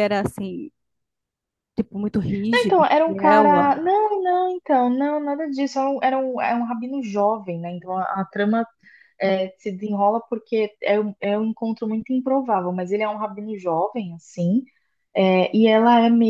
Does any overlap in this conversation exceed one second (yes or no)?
yes